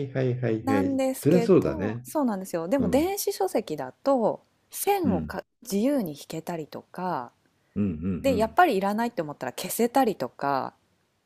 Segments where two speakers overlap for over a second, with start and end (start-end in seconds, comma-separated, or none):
0.6-2.0